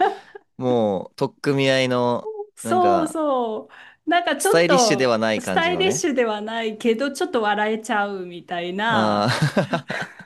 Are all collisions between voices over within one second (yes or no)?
no